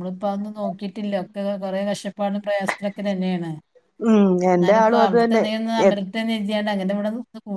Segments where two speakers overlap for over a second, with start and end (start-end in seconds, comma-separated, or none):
4.5-5.9